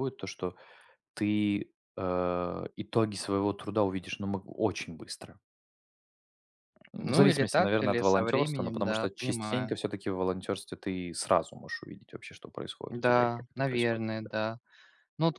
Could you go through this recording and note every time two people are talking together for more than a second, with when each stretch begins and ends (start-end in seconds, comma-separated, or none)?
7.0-9.8, 12.9-14.3